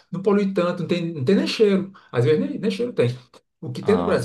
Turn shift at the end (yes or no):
no